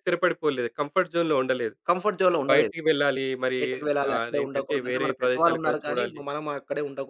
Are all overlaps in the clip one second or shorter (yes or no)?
no